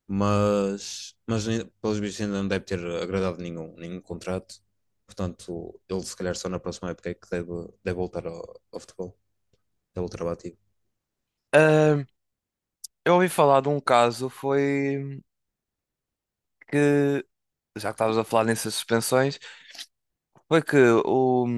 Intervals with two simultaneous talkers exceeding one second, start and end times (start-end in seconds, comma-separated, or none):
none